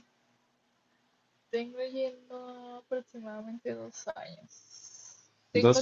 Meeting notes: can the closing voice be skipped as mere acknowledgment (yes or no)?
yes